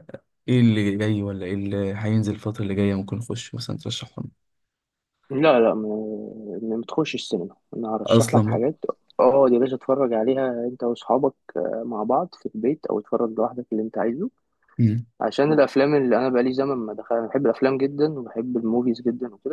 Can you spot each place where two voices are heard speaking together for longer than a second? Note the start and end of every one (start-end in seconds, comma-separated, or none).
none